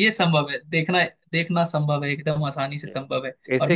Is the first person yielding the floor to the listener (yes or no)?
yes